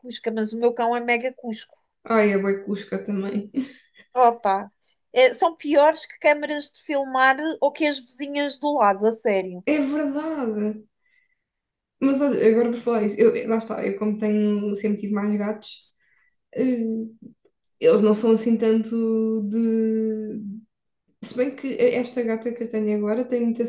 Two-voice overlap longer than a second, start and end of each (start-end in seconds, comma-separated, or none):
none